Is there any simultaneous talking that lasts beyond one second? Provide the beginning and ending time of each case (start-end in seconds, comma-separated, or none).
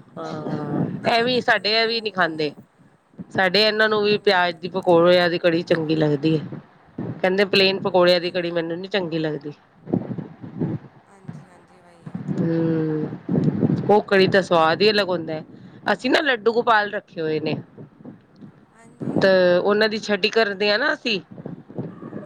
1.0-2.5